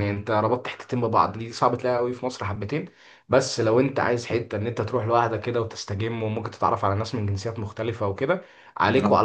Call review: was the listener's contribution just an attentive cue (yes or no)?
yes